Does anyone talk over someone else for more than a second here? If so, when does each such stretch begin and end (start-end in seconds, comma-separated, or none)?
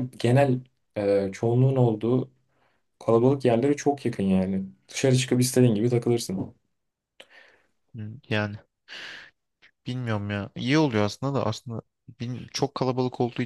none